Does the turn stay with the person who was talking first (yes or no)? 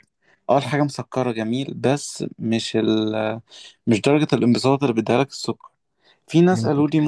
yes